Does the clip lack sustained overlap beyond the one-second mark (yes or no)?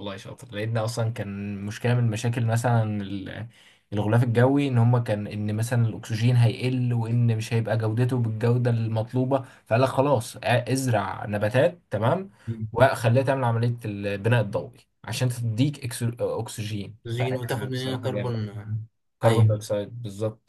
no